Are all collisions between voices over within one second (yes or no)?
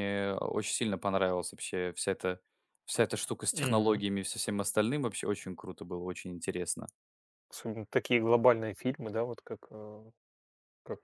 yes